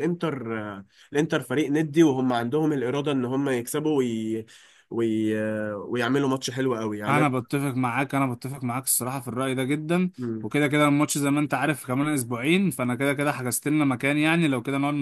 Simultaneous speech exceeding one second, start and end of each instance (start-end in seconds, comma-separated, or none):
none